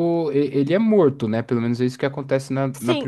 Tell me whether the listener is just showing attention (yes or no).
no